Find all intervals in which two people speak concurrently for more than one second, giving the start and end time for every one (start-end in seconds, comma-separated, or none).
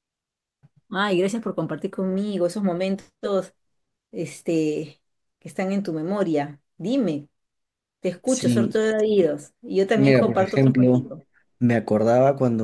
9.9-11.2